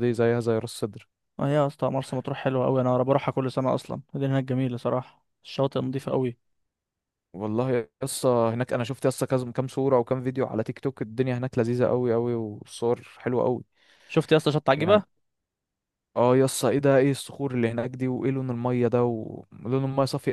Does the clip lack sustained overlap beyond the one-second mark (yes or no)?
yes